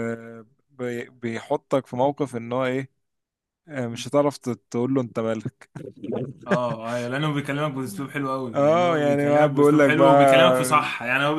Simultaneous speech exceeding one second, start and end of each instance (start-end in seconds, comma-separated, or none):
8.5-10.1